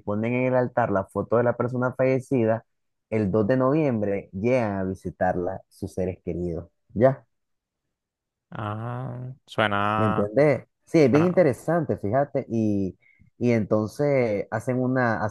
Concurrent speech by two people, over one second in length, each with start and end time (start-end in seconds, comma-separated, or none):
none